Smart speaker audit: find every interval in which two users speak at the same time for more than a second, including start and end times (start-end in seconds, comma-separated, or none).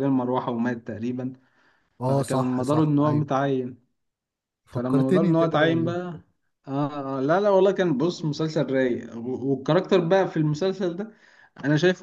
2.0-3.3, 4.7-6.0